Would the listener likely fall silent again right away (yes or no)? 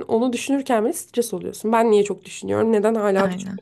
yes